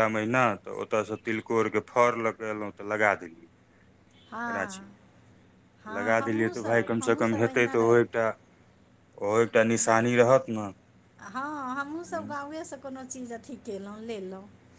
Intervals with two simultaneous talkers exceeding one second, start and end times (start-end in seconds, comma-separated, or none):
6.0-8.0